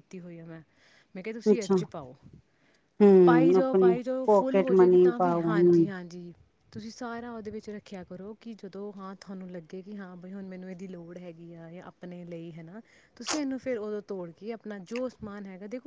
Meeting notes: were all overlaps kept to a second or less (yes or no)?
no